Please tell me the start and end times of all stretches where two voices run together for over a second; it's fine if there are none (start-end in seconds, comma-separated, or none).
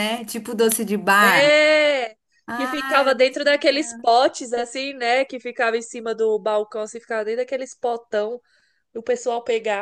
2.5-4.1